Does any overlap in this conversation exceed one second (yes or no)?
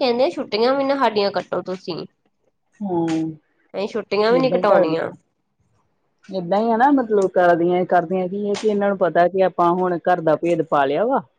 no